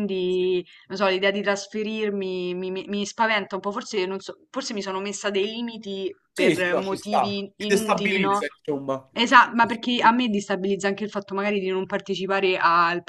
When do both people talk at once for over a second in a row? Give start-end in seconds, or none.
6.3-8.4